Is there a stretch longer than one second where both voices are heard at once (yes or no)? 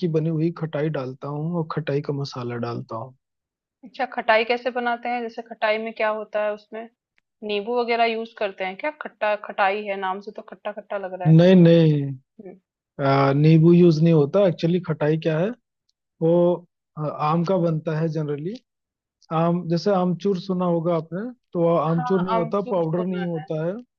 yes